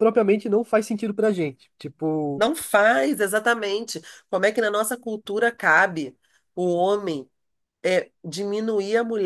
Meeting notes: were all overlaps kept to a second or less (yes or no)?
yes